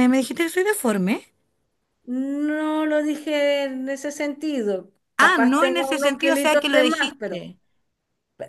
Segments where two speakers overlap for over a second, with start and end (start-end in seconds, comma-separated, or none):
5.2-7.5